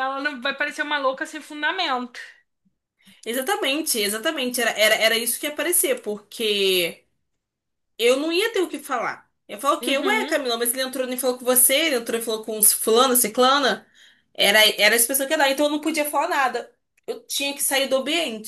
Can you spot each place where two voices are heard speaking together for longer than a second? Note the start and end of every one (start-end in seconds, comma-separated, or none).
none